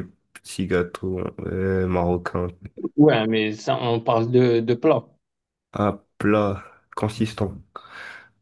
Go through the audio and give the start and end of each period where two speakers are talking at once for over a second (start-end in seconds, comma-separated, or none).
none